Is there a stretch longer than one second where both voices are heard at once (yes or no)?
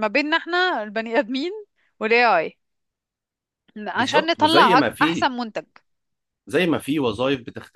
yes